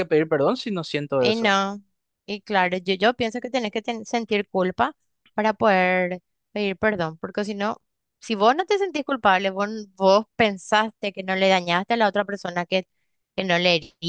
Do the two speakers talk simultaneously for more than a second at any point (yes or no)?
no